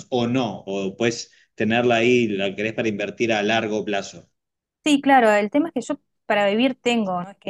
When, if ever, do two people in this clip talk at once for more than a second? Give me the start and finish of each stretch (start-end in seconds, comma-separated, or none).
none